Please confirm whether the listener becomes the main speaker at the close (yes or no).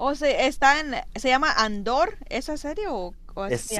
yes